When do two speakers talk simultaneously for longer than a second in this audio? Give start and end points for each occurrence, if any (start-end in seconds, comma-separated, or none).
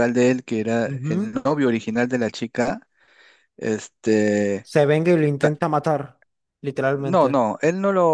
none